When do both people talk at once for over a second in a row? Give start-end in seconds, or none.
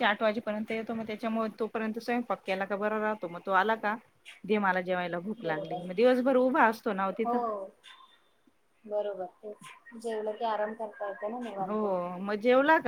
none